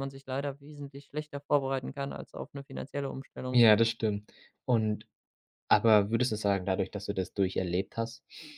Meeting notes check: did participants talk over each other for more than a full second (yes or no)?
no